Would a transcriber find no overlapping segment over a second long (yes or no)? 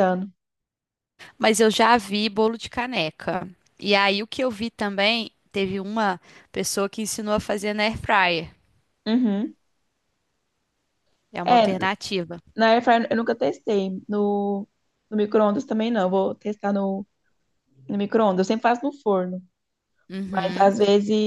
yes